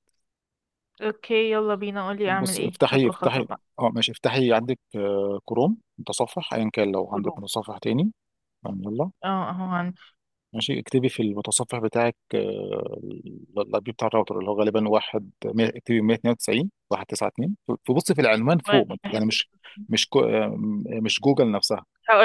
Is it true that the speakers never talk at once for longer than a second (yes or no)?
no